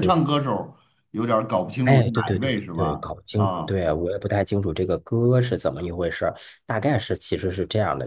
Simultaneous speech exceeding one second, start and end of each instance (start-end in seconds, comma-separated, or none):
1.8-3.8